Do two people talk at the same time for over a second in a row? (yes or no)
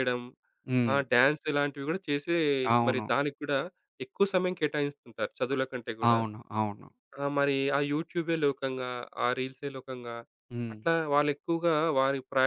no